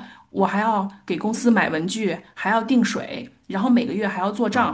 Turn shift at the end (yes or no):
no